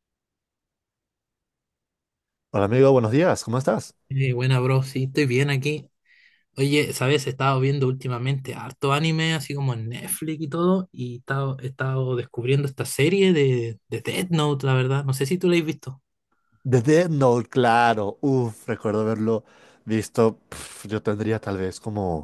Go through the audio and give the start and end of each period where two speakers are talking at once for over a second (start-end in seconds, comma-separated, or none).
none